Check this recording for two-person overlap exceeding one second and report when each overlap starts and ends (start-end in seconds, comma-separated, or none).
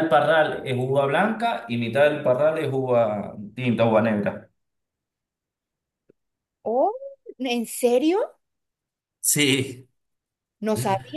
none